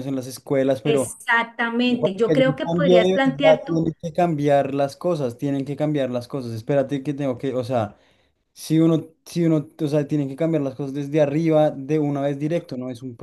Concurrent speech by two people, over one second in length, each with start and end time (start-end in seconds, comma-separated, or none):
1.9-3.9